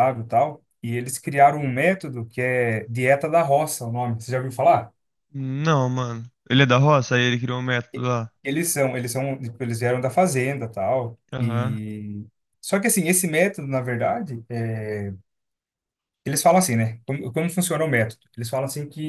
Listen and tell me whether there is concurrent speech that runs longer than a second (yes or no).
no